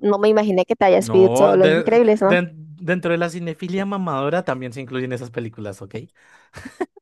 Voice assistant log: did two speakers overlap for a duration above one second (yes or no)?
yes